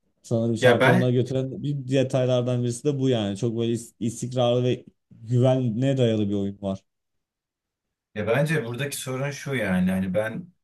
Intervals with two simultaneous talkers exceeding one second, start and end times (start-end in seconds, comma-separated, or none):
none